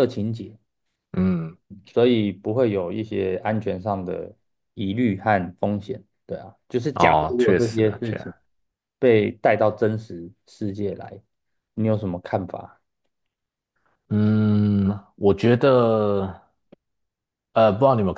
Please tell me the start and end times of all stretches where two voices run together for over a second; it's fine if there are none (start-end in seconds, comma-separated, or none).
6.9-8.3